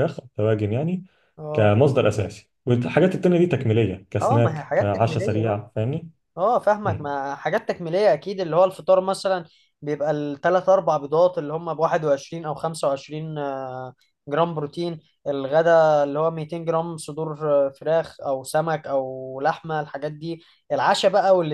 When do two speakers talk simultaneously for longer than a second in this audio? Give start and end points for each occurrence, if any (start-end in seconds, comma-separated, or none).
4.2-5.6